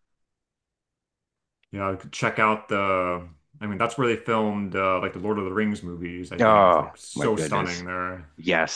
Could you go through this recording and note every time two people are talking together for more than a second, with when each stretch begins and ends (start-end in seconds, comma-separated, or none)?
6.4-7.8